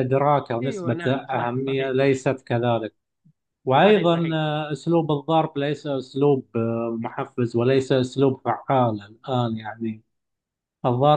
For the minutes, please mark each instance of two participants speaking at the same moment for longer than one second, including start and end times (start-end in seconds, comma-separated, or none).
0.6-2.2